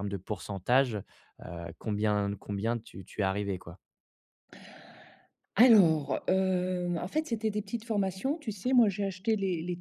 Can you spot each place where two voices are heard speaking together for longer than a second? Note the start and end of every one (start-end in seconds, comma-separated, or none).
none